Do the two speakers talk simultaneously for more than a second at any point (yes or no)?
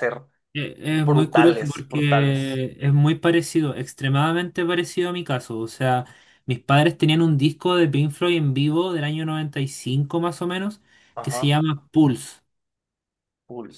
yes